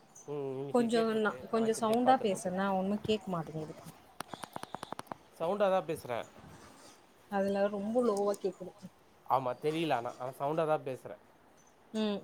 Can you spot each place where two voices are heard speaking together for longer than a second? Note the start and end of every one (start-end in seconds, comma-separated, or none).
0.7-2.5